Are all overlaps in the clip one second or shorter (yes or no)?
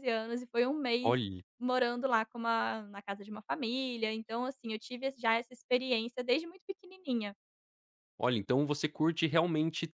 yes